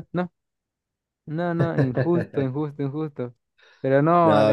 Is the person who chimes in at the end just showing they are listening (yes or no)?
yes